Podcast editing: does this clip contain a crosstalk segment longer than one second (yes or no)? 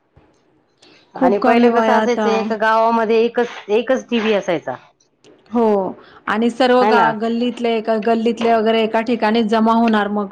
yes